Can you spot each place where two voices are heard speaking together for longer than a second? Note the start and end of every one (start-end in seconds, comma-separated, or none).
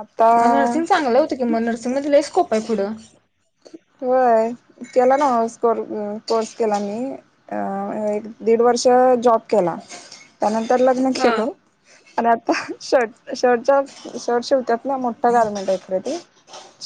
none